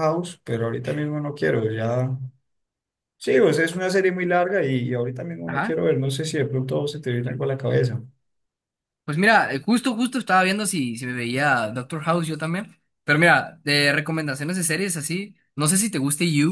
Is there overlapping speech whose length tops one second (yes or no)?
no